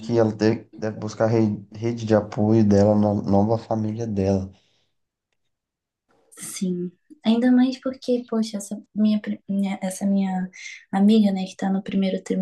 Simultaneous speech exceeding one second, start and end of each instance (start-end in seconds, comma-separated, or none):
none